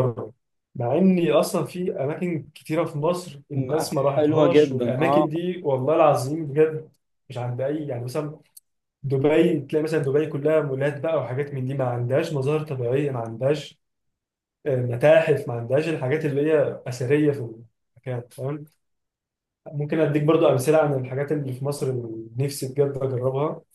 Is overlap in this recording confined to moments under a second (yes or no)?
no